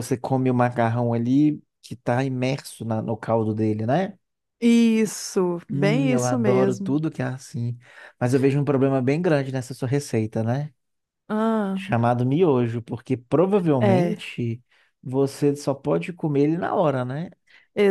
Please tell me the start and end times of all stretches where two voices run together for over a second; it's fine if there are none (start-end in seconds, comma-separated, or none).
5.7-7.0